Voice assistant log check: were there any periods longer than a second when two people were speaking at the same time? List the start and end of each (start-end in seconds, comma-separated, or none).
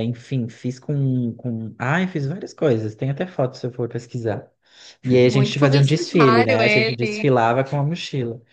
5.2-7.3